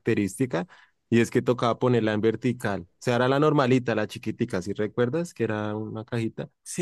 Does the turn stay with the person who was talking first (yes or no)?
no